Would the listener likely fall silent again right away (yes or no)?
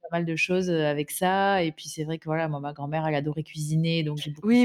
no